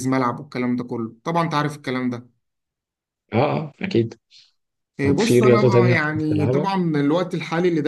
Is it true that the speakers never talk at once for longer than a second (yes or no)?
no